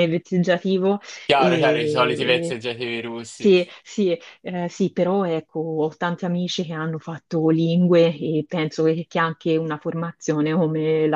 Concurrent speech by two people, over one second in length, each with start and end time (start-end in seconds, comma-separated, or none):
1.4-2.6